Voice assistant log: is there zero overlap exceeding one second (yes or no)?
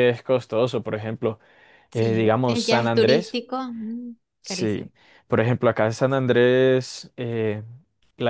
no